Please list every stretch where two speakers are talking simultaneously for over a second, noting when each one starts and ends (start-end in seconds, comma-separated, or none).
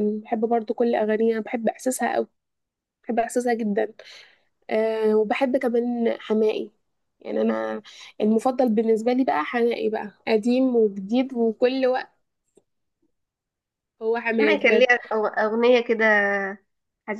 none